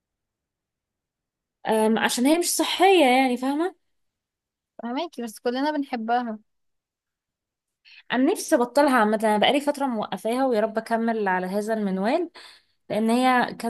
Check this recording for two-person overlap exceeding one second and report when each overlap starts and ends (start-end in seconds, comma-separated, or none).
none